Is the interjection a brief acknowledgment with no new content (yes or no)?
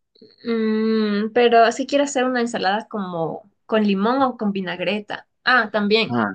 yes